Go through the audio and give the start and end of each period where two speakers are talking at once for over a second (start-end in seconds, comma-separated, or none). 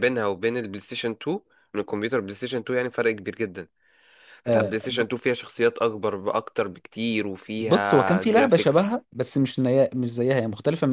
7.6-9.0